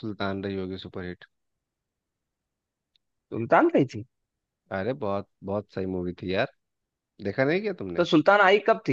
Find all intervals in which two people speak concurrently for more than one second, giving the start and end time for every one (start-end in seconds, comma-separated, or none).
none